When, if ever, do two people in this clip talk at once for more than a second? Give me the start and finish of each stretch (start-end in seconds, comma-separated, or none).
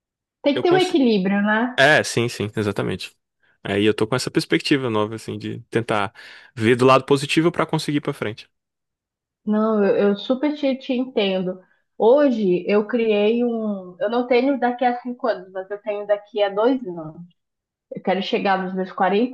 none